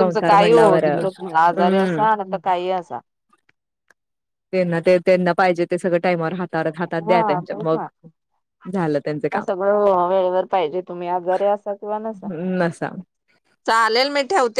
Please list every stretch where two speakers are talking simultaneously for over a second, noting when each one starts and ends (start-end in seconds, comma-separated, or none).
none